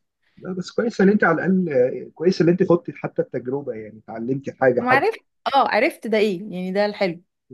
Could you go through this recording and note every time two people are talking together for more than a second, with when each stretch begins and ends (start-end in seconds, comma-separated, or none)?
none